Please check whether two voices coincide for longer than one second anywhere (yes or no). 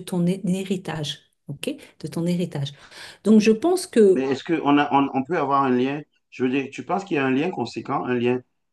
no